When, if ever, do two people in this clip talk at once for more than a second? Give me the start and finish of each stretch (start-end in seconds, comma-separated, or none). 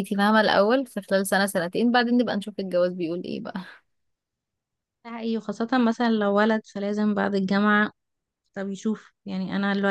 none